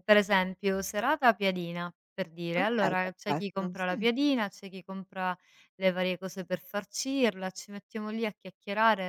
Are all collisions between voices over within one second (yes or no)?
no